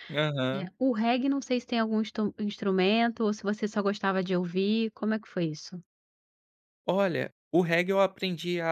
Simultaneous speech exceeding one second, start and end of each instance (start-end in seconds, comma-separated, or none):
none